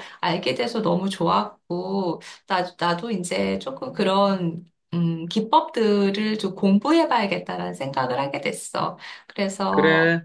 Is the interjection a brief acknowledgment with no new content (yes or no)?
yes